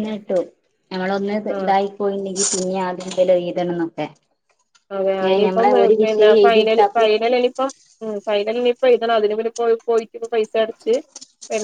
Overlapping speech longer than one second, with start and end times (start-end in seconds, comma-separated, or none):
5.2-7.1